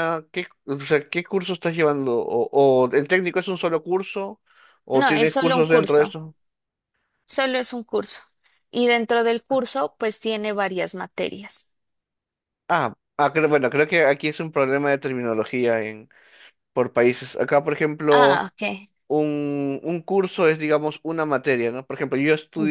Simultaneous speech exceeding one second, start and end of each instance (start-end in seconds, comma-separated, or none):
4.9-6.1